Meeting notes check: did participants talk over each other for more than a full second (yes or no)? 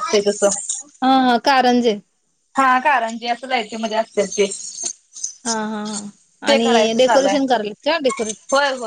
no